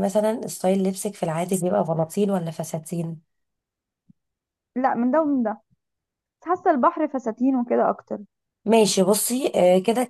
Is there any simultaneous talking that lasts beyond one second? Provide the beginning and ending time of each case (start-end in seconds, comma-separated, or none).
none